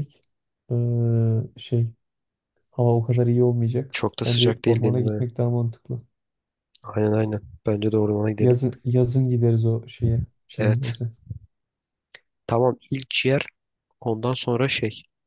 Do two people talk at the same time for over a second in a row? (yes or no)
yes